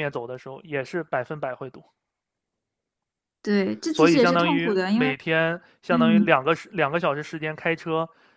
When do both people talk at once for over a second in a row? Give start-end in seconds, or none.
3.9-5.1